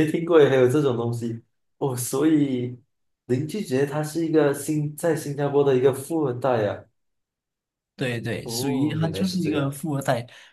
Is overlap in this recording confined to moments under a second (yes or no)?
no